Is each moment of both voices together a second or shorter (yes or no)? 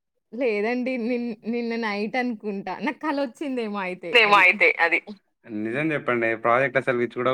yes